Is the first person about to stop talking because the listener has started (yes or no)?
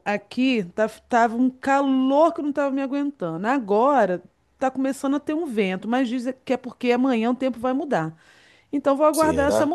no